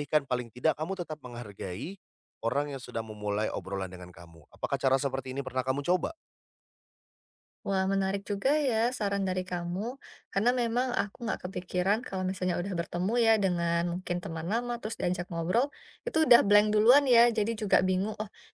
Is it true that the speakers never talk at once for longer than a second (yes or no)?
yes